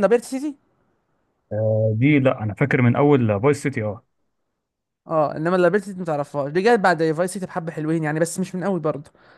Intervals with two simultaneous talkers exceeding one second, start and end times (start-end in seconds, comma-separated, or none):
none